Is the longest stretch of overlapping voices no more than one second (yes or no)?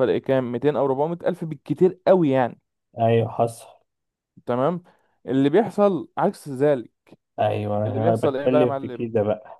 no